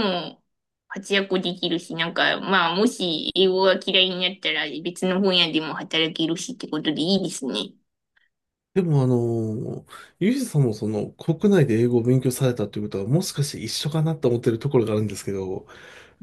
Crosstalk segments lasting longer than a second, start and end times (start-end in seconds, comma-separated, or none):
none